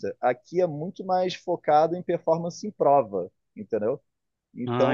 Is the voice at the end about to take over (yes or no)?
no